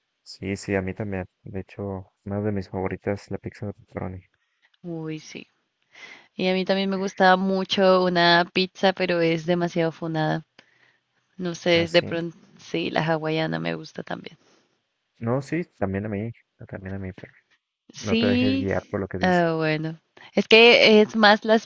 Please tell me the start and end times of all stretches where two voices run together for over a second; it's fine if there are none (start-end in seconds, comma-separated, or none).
18.0-19.4